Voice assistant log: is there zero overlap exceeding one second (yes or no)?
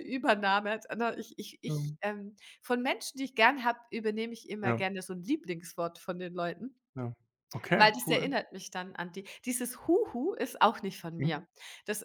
yes